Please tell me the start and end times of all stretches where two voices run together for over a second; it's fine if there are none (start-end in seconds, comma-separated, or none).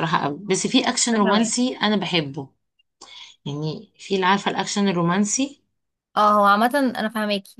none